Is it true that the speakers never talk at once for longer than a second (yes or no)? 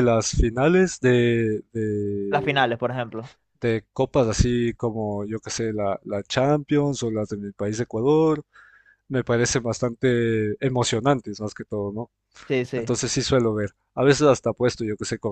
yes